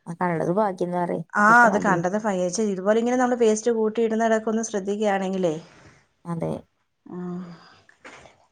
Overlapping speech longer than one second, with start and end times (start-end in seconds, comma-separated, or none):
none